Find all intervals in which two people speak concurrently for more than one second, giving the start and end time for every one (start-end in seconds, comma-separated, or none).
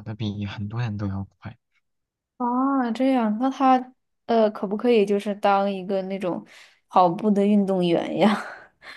none